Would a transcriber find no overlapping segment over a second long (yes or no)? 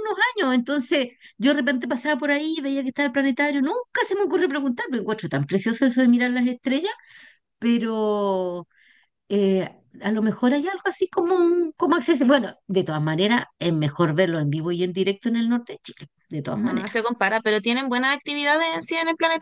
yes